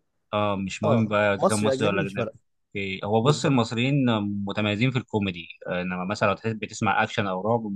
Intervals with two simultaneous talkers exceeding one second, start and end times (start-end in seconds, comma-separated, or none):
0.8-2.3